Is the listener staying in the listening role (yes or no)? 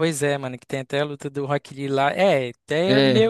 yes